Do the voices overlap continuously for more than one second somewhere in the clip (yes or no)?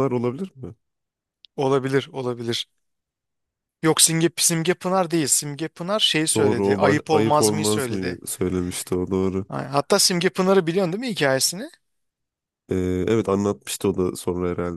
yes